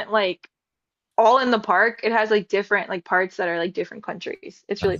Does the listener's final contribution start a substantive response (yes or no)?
yes